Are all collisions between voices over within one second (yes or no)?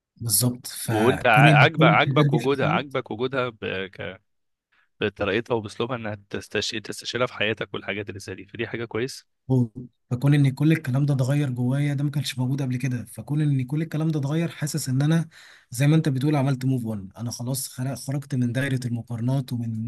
no